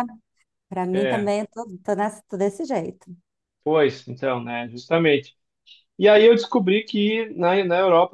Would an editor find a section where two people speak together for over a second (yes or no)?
no